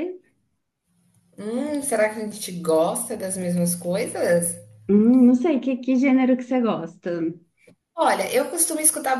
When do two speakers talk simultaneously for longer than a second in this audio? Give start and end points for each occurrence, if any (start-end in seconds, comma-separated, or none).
none